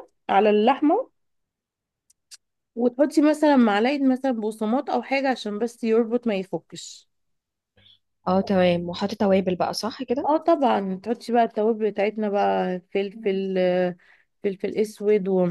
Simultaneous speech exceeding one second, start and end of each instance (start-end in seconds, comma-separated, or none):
none